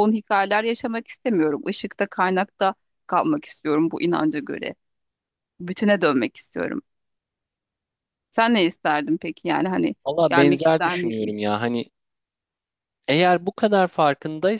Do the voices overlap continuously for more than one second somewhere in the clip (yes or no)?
yes